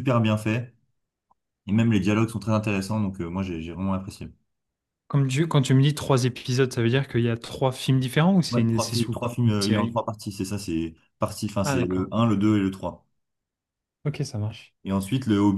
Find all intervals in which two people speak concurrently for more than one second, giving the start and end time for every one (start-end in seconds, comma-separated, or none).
8.5-10.0